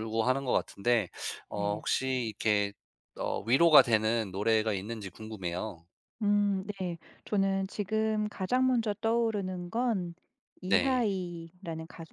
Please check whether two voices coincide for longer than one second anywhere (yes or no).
no